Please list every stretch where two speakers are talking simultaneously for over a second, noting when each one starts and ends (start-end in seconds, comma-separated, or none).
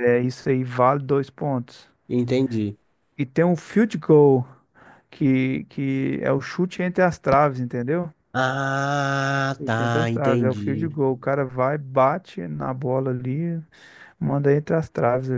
9.6-11.0